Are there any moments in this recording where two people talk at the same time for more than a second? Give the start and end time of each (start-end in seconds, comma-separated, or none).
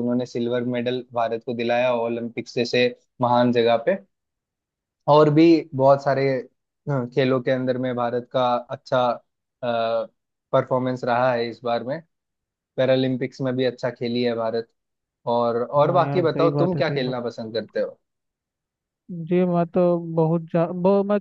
15.9-17.3